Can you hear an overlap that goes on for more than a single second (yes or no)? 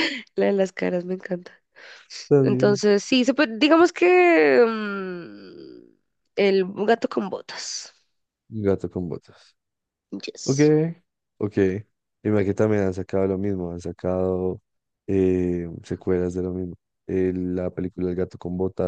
no